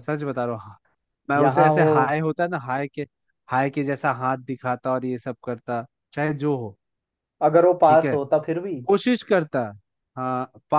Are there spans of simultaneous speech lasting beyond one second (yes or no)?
no